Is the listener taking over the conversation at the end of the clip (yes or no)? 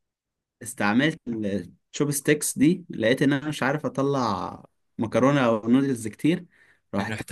no